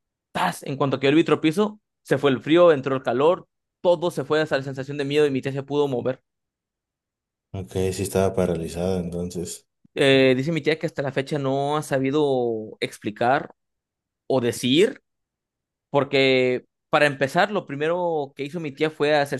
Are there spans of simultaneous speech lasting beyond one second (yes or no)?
no